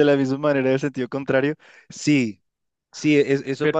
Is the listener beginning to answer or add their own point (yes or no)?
no